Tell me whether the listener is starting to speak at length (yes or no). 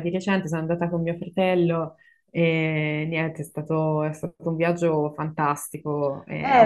yes